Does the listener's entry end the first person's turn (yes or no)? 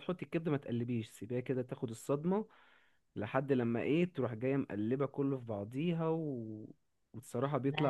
no